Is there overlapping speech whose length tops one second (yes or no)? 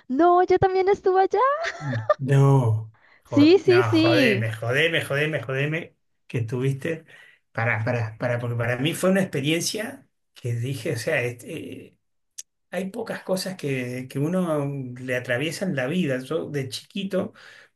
yes